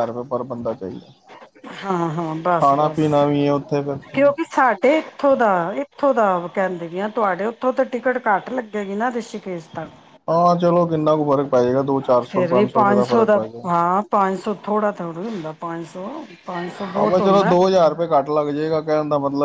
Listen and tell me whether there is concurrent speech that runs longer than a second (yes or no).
no